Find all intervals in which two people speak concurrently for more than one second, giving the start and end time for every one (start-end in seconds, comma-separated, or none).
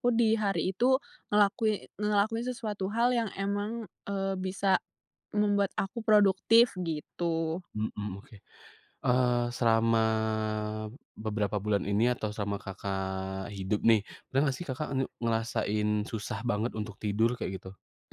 none